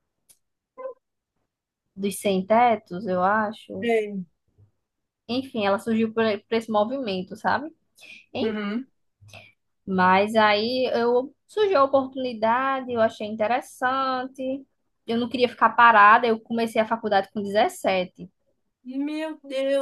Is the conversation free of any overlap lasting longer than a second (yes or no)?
yes